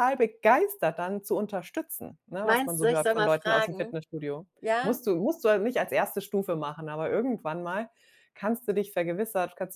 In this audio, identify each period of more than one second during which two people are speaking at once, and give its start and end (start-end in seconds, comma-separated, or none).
2.4-4.0